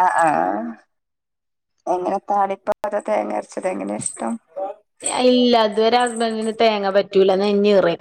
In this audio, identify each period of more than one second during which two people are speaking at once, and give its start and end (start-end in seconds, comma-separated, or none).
none